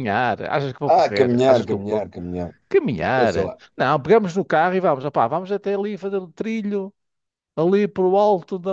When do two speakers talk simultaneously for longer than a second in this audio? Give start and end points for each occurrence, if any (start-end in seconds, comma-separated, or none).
0.8-2.1